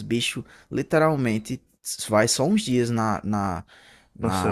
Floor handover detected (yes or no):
no